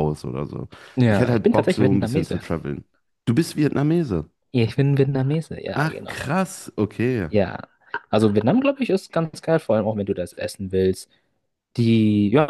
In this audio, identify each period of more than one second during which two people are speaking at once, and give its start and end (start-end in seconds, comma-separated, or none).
1.1-2.4